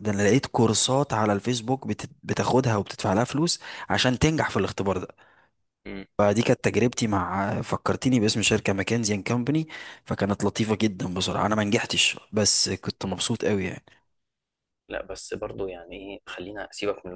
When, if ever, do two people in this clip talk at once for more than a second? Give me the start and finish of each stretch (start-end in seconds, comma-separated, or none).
none